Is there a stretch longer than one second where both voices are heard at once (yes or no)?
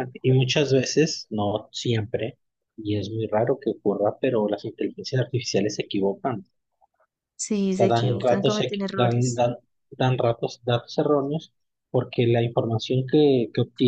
yes